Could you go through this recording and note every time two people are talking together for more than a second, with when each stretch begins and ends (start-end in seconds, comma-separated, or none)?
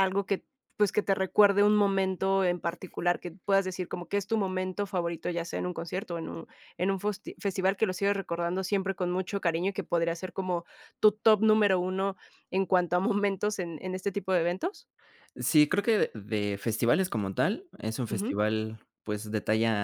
none